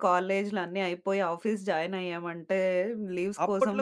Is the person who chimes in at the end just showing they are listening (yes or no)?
no